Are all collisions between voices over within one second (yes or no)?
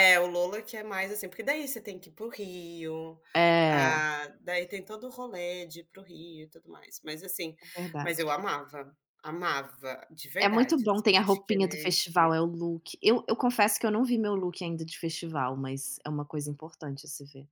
no